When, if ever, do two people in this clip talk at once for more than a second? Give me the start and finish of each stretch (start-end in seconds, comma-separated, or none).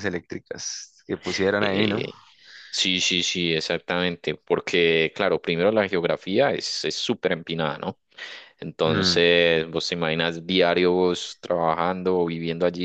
none